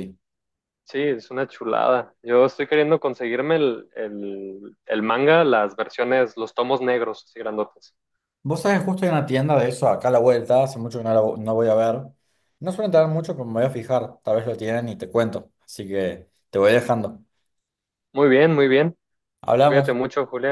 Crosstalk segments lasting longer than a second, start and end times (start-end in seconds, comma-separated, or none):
none